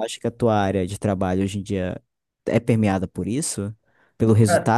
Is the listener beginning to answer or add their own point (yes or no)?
no